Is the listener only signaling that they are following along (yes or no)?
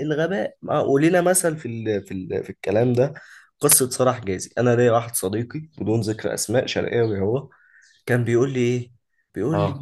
yes